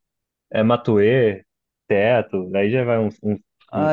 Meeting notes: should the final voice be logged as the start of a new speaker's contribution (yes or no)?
yes